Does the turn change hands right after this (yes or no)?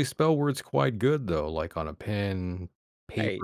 no